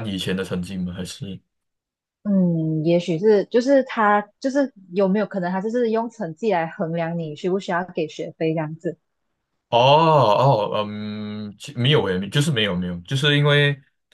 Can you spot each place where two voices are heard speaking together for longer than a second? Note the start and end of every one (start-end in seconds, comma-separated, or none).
none